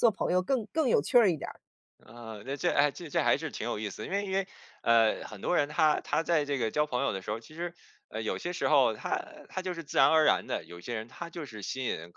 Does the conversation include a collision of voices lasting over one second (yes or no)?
no